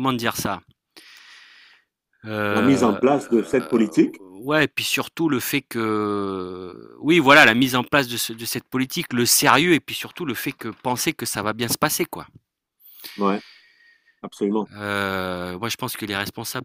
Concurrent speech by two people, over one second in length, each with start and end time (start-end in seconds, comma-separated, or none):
none